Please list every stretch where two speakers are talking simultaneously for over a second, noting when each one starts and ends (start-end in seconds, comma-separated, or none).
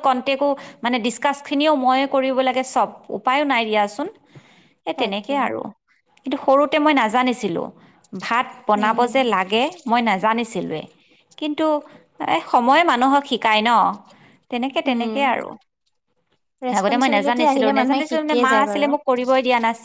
16.8-18.9